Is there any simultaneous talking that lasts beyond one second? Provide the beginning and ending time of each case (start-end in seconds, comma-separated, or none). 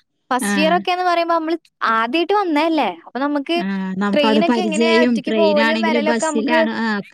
4.1-6.6